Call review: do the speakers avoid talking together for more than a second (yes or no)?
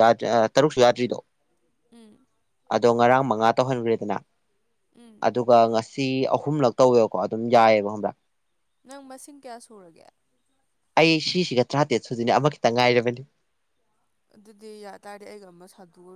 yes